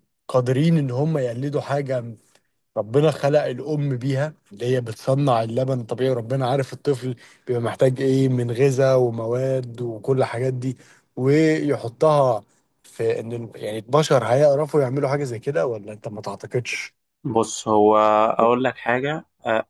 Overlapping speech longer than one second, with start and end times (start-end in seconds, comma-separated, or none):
none